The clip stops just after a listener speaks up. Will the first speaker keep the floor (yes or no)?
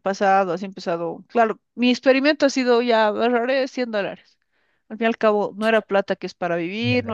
yes